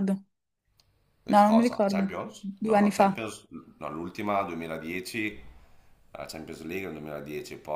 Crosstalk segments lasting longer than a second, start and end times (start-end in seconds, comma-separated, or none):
1.3-3.2